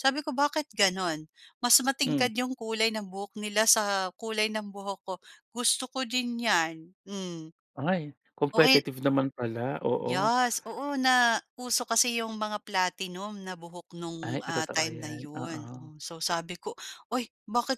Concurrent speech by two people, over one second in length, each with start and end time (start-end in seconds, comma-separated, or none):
14.2-15.9